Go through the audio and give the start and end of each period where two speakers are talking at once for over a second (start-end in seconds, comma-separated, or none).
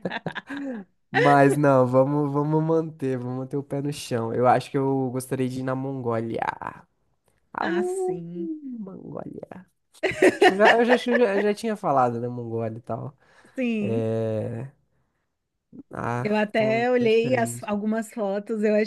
16.2-17.7